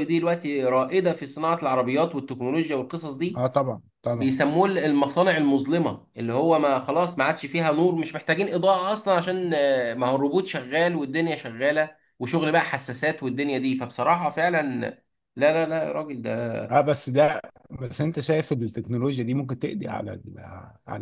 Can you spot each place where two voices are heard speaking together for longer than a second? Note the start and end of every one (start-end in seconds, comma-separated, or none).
none